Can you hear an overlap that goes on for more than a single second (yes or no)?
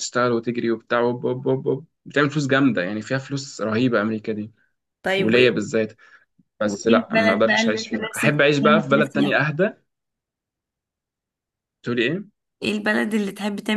yes